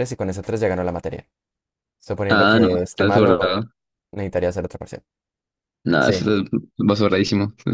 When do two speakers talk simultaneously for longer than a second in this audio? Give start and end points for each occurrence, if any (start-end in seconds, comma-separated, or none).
2.3-3.6